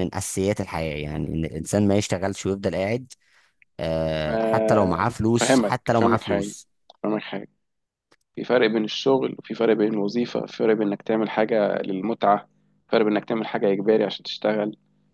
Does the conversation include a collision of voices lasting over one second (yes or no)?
yes